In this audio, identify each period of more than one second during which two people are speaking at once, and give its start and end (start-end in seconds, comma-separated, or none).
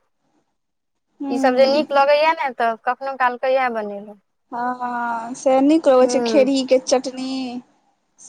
none